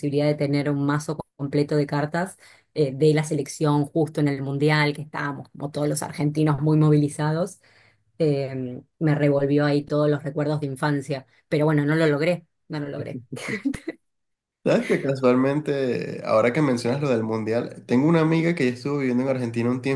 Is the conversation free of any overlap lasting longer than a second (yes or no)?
yes